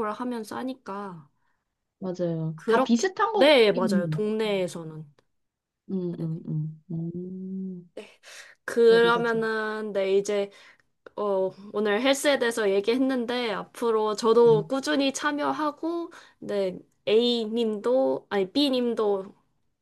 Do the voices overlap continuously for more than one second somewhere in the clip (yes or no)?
yes